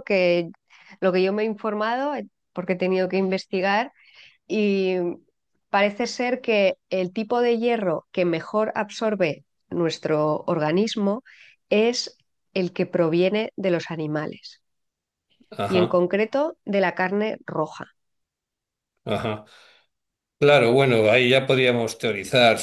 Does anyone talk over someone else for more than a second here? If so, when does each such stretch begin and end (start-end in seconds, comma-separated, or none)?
none